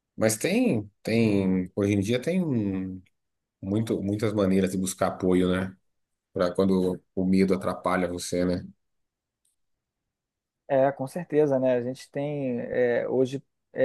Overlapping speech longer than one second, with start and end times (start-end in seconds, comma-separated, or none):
none